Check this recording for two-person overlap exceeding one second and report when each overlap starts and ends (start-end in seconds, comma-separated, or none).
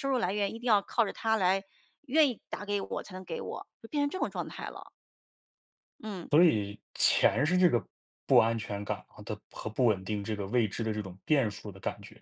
none